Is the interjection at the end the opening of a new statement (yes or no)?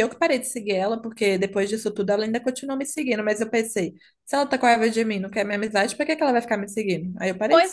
yes